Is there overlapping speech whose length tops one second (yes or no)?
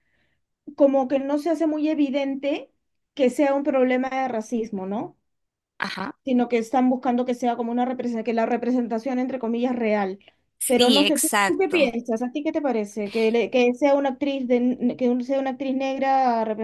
yes